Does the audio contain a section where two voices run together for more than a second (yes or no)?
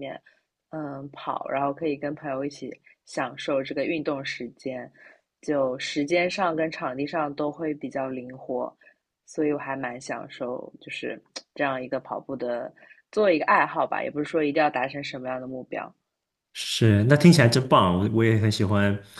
no